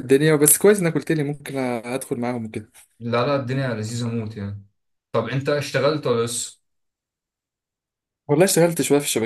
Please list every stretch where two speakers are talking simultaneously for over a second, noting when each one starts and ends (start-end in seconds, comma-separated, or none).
none